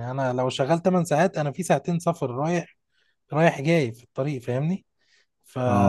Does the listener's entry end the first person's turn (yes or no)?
no